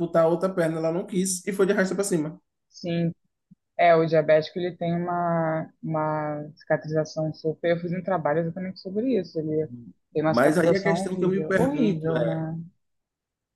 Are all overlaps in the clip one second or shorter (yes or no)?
no